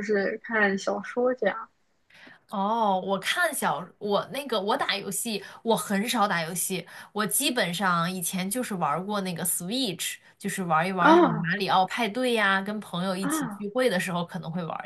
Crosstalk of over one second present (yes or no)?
no